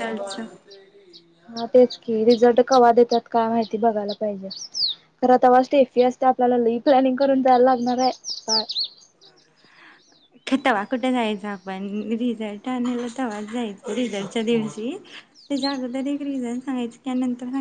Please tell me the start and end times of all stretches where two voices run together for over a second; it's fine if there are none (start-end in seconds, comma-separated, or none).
none